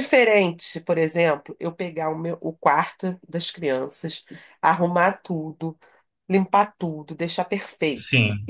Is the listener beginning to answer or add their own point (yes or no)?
no